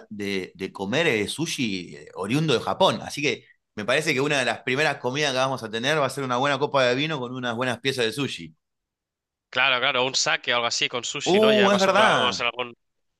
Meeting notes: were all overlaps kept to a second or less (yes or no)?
no